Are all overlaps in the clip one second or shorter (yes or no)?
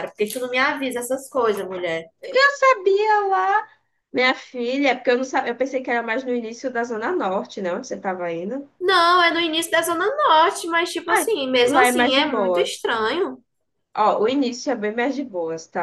no